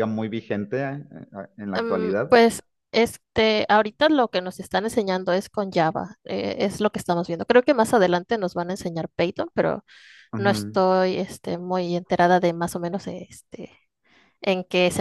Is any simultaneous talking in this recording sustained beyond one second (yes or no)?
no